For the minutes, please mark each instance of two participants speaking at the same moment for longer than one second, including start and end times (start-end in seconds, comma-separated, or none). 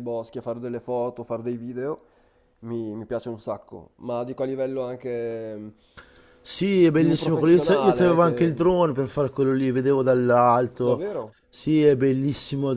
6.9-8.5